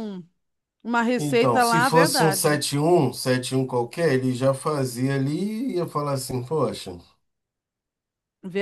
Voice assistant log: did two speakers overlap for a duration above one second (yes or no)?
yes